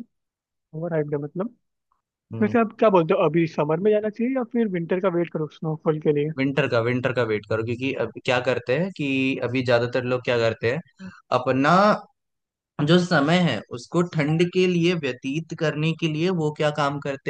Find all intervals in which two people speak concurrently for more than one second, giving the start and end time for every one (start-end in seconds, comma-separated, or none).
none